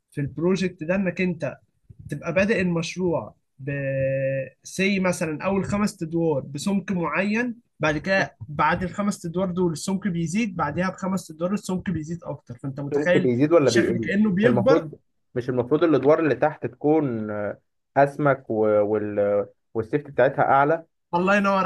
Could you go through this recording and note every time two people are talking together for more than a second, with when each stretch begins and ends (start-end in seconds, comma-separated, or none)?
12.9-14.9